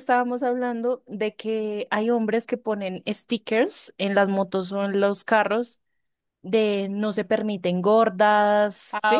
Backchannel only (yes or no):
no